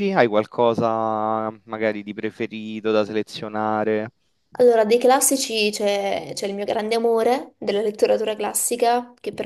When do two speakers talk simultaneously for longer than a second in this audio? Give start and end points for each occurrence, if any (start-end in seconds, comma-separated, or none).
none